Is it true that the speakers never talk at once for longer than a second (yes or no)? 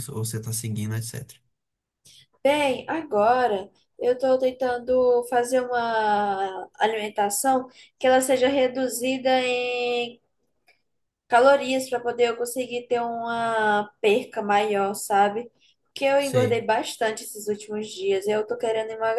yes